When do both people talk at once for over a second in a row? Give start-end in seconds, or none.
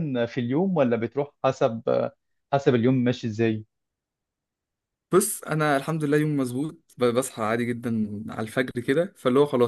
none